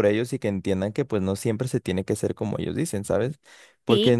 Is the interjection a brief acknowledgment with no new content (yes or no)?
yes